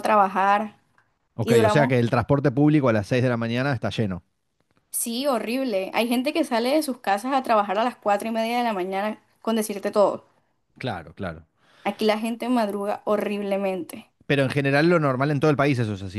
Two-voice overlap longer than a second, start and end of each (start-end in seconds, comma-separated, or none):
none